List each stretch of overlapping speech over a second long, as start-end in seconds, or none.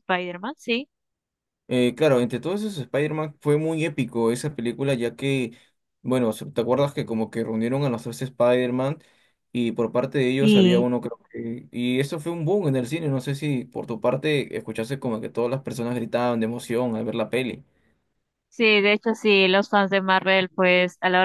none